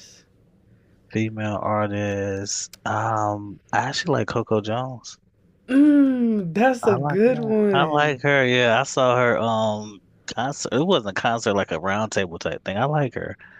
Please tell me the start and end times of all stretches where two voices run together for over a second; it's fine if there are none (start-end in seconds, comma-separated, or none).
6.8-8.2